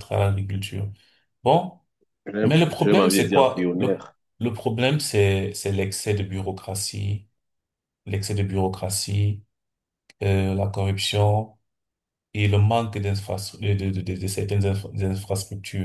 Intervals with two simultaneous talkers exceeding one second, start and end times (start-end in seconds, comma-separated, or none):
2.4-4.0